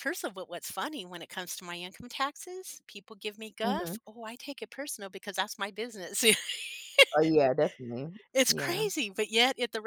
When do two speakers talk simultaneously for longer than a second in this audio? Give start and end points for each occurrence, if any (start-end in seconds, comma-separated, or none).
none